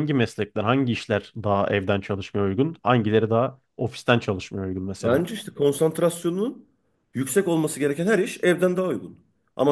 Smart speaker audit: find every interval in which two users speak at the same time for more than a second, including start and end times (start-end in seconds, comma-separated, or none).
none